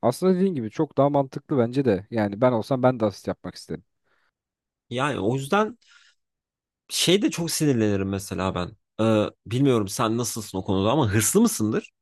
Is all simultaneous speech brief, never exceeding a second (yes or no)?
yes